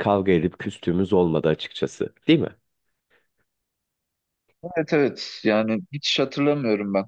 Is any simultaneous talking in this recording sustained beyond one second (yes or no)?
no